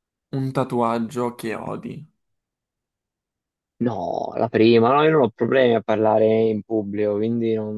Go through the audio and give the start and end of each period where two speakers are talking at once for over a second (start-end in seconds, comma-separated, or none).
none